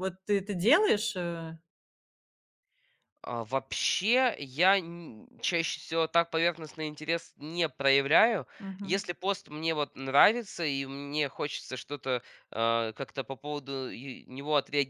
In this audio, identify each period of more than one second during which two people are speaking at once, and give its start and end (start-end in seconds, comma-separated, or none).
none